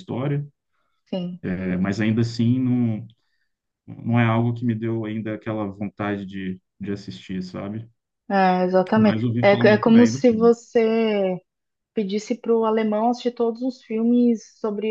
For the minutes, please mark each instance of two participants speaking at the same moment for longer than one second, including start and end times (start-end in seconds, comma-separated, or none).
8.9-10.5